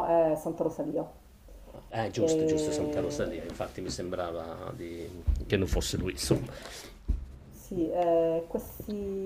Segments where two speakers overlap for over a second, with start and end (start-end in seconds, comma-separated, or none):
none